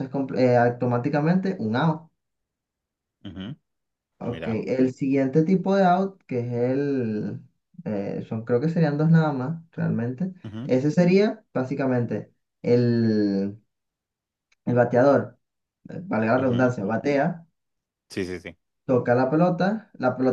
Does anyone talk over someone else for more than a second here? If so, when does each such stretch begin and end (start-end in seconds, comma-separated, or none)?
none